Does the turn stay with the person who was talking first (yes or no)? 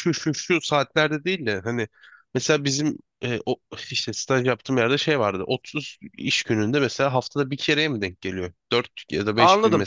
no